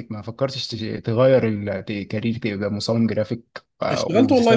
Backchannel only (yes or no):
no